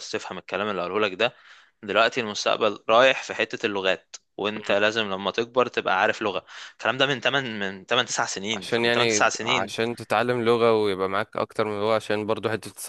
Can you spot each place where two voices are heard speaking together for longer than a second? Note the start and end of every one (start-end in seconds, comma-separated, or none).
8.5-9.8